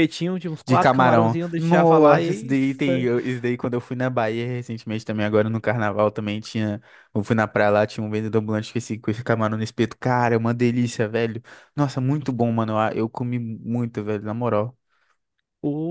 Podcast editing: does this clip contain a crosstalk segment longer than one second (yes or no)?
yes